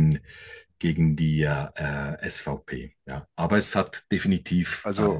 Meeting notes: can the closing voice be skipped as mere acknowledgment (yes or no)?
yes